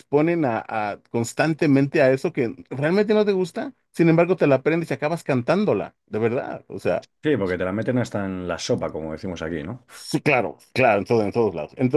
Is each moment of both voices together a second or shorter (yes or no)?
yes